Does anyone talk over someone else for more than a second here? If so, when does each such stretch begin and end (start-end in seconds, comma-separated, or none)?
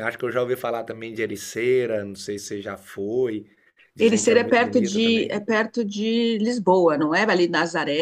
4.0-5.4